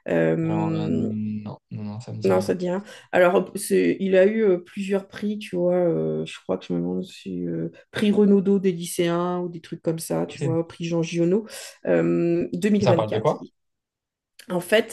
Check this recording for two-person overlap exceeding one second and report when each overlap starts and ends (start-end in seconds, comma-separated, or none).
none